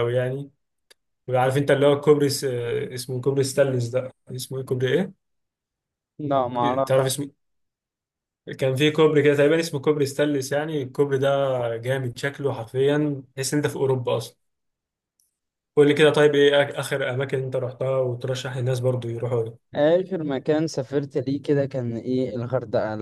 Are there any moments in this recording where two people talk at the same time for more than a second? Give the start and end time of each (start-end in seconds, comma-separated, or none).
none